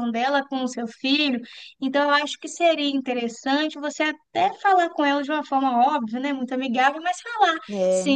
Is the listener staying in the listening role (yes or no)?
yes